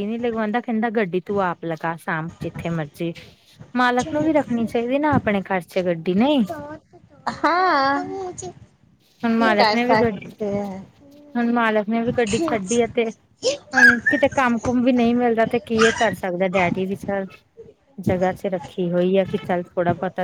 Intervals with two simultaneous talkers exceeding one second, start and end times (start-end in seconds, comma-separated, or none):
none